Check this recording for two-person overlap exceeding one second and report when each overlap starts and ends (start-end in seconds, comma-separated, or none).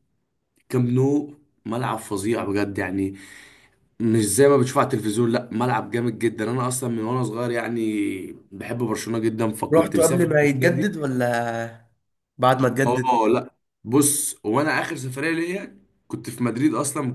9.7-11.0